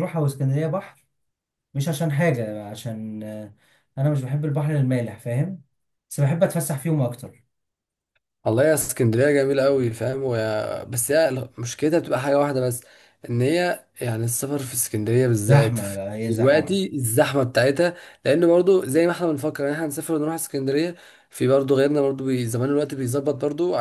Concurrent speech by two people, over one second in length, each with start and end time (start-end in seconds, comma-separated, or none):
15.5-16.8